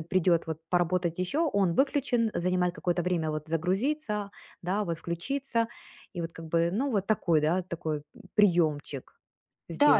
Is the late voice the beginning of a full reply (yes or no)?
yes